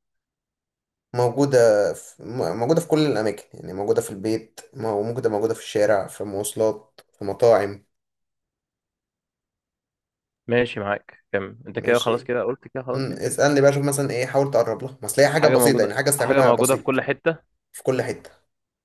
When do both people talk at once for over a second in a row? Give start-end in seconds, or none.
15.3-17.0